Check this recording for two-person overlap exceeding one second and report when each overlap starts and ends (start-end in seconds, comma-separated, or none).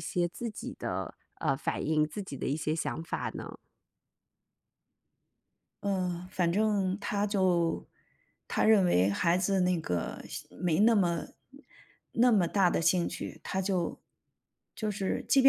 none